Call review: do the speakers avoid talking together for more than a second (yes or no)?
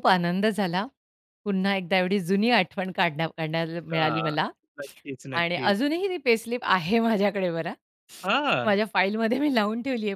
yes